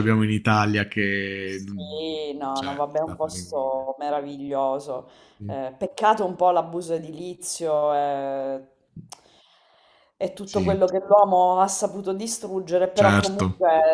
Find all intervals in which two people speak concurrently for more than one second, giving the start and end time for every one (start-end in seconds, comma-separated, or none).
2.5-3.9